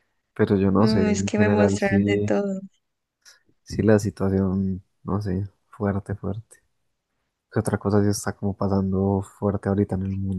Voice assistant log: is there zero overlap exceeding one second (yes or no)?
no